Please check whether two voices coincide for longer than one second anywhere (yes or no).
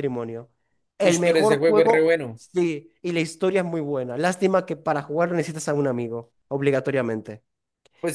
yes